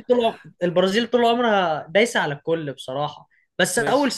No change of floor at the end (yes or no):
yes